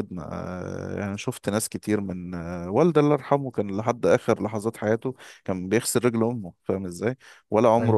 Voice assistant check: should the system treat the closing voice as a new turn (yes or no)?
no